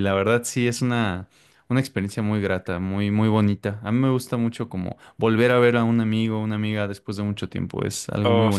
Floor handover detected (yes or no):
yes